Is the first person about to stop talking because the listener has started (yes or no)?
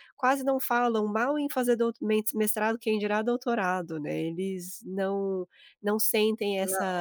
no